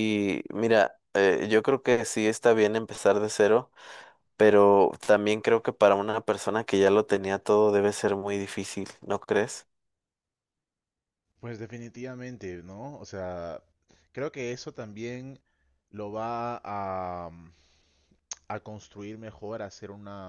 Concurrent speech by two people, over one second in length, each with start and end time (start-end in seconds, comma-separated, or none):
none